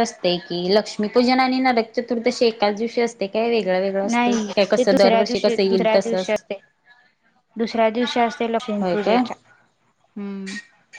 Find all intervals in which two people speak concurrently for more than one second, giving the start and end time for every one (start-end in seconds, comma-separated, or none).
4.1-6.2